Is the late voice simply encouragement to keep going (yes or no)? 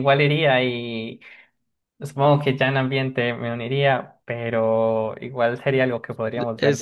no